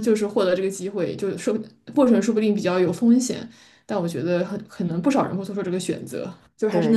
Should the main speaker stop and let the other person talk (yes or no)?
yes